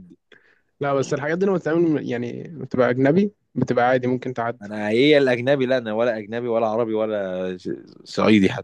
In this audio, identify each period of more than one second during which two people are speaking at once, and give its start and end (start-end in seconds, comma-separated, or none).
none